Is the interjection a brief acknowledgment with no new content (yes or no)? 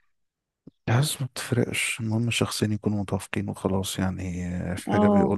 yes